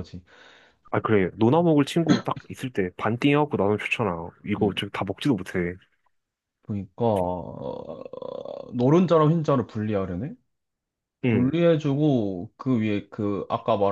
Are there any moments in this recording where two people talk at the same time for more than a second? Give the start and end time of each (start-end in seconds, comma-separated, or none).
none